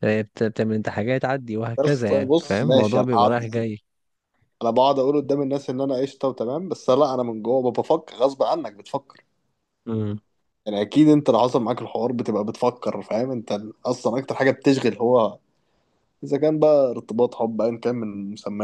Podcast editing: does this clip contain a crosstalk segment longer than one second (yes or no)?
yes